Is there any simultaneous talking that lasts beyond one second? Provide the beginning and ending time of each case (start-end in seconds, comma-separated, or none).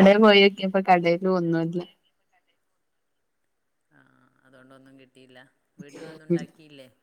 none